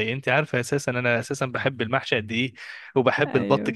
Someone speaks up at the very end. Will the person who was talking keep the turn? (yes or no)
yes